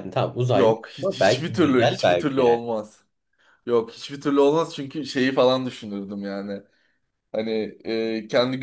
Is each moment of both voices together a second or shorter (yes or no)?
no